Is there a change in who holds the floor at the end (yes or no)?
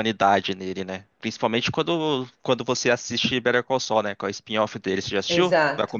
yes